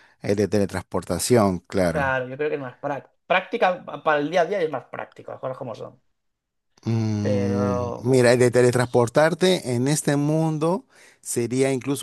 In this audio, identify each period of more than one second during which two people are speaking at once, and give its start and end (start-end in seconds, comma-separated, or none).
7.2-8.5